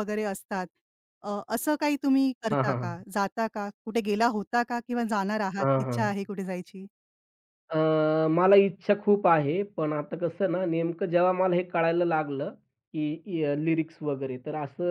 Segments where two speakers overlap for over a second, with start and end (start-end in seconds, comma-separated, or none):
none